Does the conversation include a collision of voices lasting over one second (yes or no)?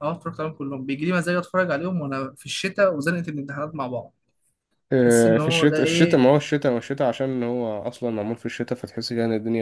yes